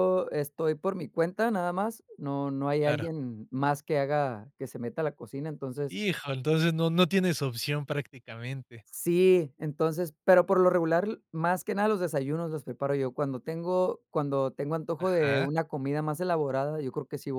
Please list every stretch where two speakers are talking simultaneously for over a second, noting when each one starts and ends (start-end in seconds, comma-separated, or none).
none